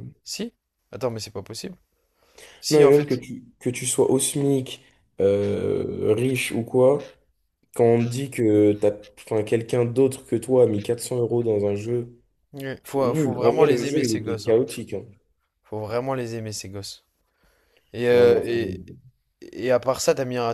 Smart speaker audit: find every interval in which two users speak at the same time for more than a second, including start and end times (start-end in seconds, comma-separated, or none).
13.0-14.6